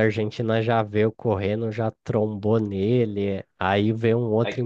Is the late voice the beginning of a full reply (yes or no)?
no